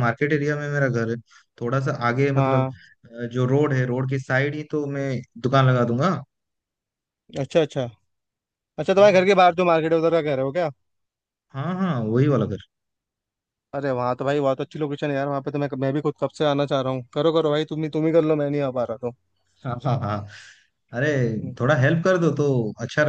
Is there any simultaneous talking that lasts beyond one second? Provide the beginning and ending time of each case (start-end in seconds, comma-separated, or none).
none